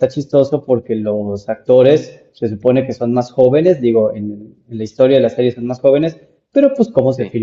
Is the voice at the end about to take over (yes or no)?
no